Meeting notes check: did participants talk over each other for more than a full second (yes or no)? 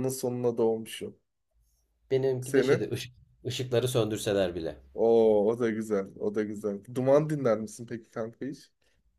no